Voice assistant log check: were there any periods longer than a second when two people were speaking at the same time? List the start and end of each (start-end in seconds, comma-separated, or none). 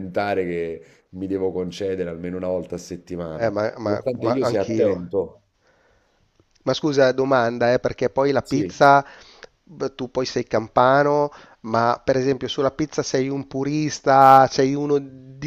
3.3-4.9